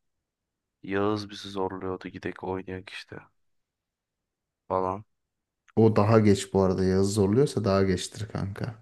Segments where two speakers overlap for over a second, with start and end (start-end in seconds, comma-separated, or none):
none